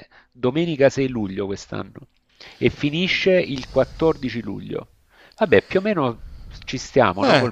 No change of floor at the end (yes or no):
no